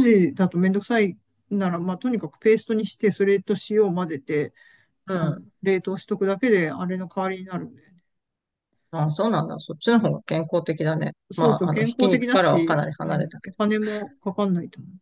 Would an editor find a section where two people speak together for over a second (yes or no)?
yes